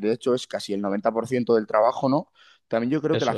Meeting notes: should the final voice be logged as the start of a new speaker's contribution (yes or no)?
no